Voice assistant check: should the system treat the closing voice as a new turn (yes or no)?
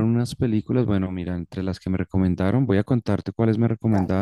no